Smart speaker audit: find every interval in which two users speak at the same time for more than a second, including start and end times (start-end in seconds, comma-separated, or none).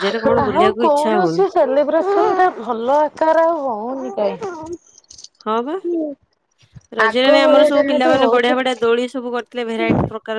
7.0-8.7